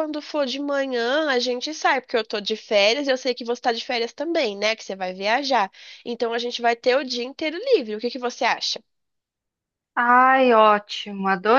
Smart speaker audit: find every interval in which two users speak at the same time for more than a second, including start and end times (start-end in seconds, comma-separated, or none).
none